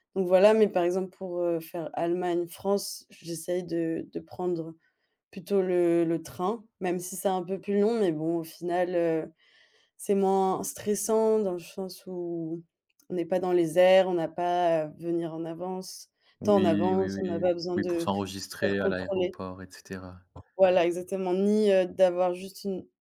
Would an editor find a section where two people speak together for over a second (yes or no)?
yes